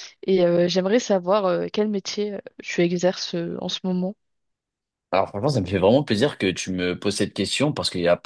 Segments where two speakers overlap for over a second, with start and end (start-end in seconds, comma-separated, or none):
none